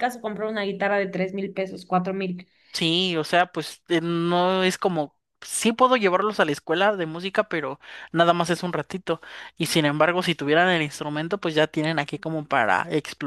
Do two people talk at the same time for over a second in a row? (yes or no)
no